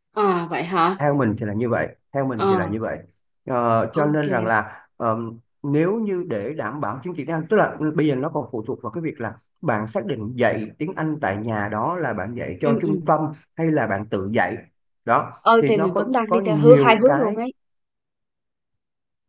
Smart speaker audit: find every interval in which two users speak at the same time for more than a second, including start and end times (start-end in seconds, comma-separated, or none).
15.4-17.4